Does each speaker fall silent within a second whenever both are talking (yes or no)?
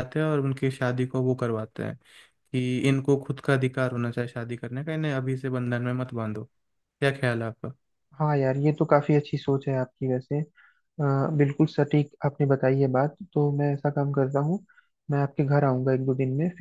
yes